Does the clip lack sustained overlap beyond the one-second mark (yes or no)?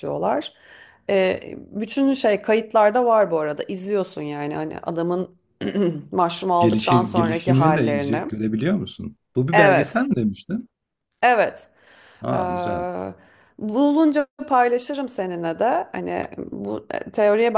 no